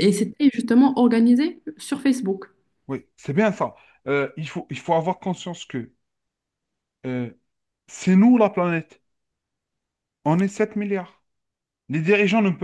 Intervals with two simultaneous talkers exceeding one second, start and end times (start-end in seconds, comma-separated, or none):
none